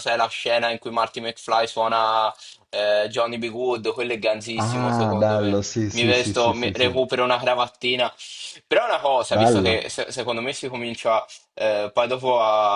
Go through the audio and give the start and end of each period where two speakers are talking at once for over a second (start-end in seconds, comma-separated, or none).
4.6-7.0